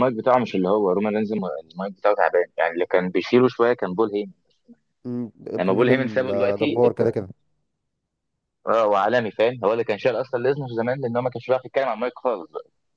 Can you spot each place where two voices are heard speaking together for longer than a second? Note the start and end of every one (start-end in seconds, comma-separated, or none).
5.6-7.2